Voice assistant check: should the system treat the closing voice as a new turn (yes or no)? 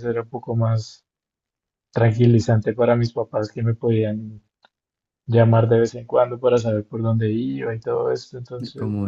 no